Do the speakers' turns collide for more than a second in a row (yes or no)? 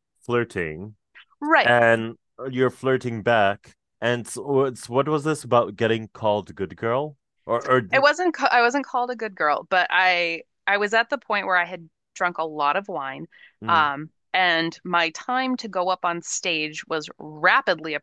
no